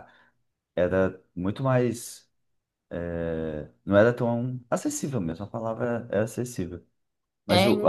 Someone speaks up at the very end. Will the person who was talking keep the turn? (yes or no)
yes